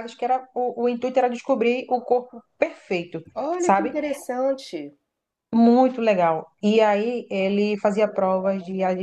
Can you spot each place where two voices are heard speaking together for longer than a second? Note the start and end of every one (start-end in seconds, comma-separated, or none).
none